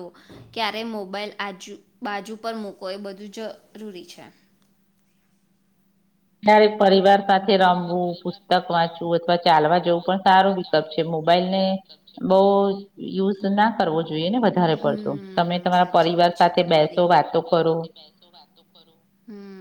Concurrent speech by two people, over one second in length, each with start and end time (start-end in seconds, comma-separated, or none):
14.8-17.1